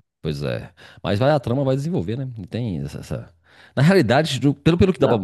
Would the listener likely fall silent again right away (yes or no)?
yes